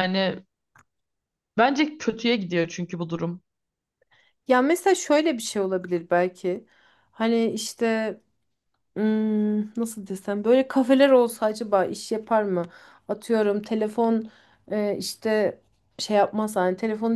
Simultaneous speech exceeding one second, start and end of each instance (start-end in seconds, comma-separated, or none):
none